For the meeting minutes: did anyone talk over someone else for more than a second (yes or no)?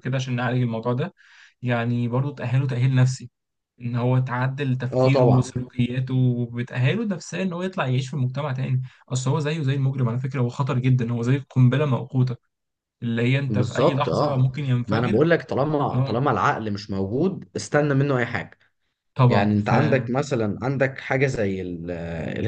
yes